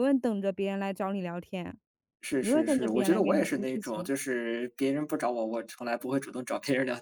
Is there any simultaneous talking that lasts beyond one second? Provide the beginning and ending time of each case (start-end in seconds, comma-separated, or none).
2.4-4.1